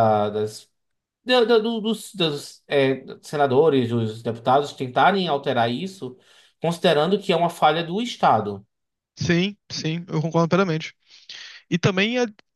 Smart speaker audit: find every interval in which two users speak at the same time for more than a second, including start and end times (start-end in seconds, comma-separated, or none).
none